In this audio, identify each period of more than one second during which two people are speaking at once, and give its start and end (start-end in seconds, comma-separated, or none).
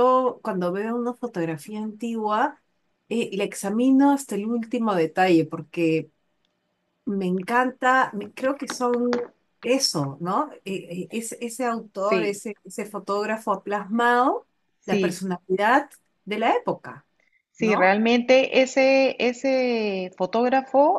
none